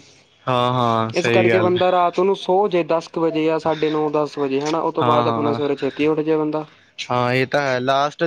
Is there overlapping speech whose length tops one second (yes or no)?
no